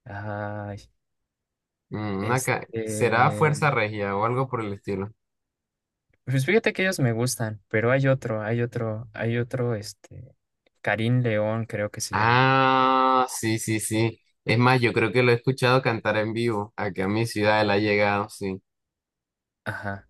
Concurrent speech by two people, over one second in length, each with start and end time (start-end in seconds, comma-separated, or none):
2.2-3.6